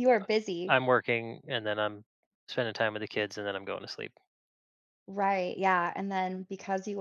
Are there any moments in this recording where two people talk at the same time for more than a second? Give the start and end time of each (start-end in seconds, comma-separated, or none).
none